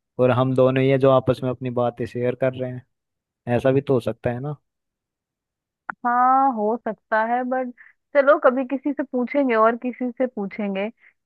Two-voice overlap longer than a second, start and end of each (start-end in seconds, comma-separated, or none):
none